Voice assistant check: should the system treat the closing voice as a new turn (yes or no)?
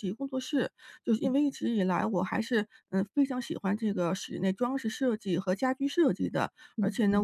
no